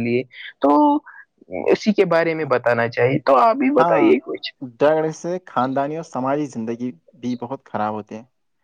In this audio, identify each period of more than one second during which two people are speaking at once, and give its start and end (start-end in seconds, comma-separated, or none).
none